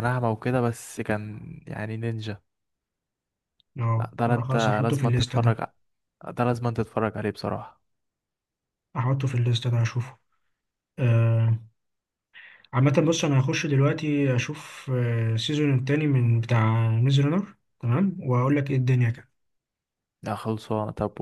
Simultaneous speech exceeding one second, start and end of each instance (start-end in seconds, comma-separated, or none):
4.0-5.6